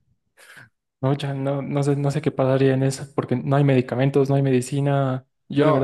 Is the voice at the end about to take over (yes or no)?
no